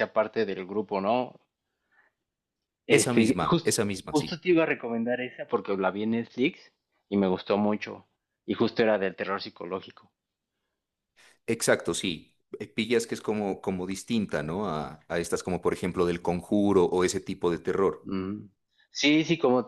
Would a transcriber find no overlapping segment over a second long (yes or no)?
no